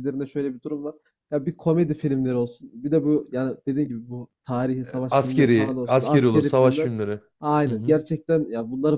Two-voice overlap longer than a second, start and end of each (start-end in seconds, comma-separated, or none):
5.1-6.9